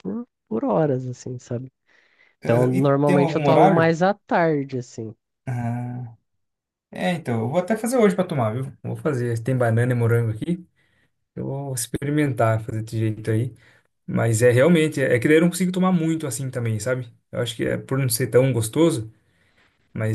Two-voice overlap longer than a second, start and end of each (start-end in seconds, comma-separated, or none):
2.4-3.9